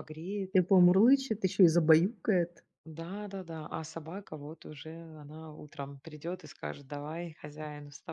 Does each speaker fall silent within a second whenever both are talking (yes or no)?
yes